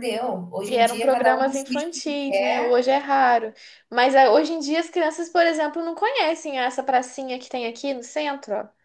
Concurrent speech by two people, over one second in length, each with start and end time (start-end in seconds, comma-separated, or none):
0.6-2.7